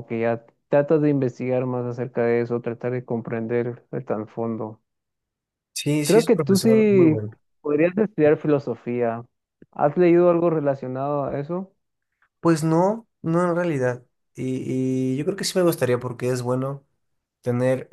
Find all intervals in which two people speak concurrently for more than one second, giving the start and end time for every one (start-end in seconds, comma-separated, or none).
6.0-7.2